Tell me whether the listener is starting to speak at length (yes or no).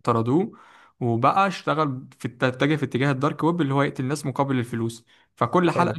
no